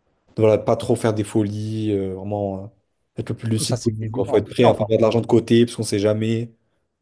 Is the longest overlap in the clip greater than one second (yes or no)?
yes